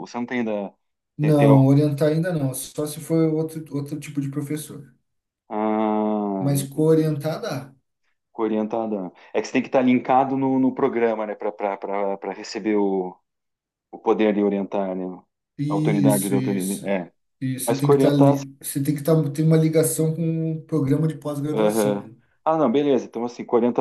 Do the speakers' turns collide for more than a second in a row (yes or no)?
yes